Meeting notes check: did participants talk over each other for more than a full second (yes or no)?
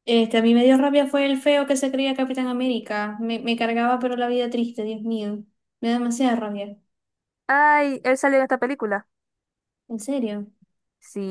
no